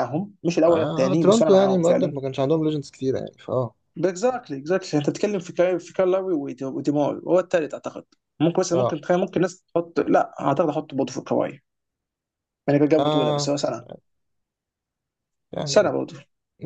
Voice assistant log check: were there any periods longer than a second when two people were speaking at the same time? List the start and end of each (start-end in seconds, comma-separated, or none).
0.7-2.2